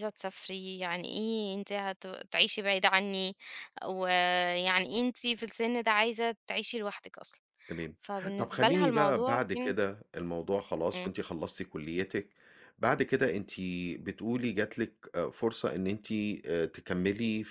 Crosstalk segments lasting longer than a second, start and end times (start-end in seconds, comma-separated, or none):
8.4-9.8